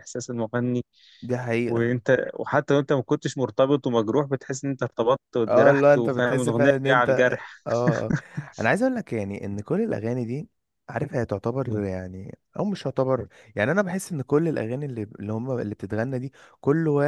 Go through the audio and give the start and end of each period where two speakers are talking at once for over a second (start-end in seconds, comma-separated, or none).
5.5-7.6